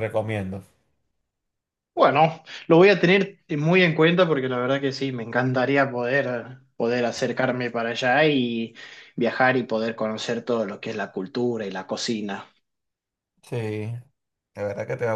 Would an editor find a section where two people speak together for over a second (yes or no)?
no